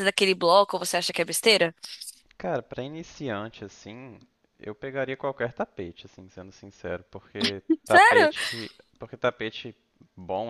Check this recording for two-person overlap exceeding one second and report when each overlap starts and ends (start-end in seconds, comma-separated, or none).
none